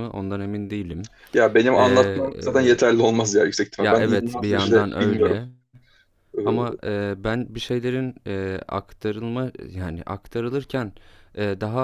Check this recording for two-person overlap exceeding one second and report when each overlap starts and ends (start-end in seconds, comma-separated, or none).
3.8-5.4